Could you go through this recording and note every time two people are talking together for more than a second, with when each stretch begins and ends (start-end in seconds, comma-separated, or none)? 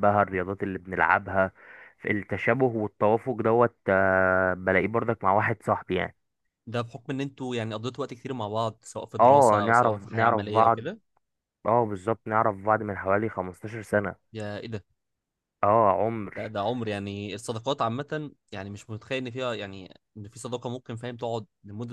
9.2-10.8